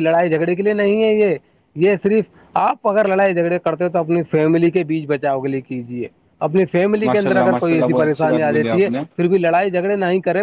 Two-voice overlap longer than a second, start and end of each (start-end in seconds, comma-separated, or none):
7.0-9.0